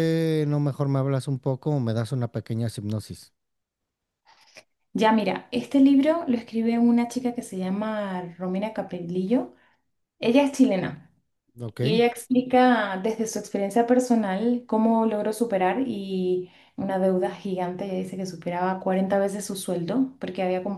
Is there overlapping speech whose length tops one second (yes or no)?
no